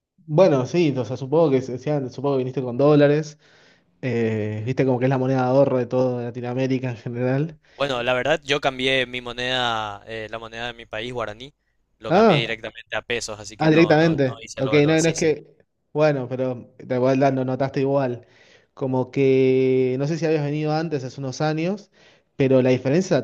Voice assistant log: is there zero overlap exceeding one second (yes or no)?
no